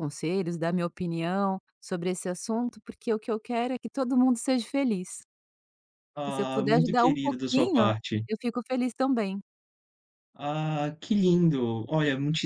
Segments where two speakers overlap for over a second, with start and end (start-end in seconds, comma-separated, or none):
6.3-7.9